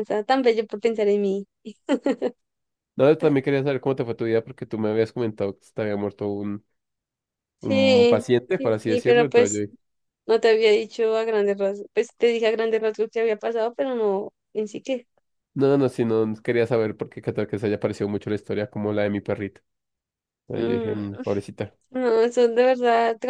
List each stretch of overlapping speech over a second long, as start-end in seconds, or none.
7.6-9.6